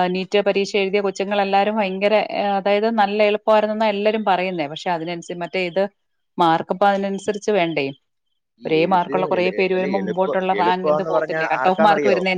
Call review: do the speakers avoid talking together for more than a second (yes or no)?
no